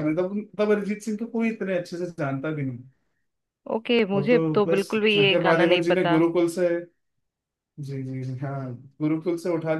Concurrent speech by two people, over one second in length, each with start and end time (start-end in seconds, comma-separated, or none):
4.1-6.2